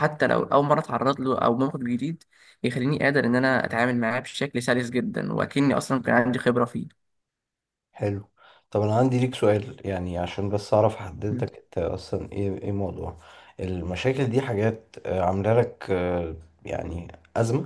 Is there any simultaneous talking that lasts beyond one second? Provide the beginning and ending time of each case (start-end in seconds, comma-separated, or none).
none